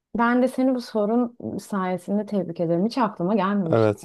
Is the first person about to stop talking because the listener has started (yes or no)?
yes